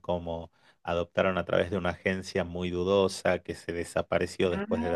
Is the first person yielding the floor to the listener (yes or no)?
no